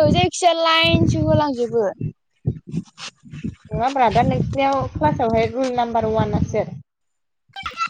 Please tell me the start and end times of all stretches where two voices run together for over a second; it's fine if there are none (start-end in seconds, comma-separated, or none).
none